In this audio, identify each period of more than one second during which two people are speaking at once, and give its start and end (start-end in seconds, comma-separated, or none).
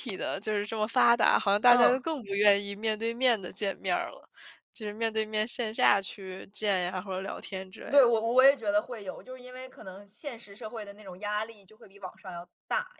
none